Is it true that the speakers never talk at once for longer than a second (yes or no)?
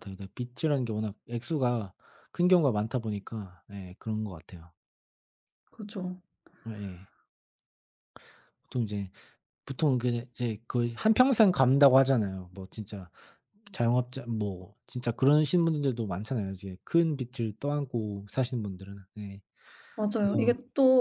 yes